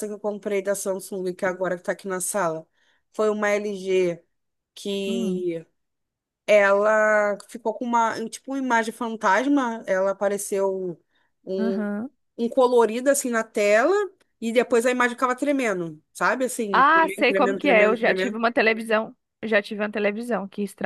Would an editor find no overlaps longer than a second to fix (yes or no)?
no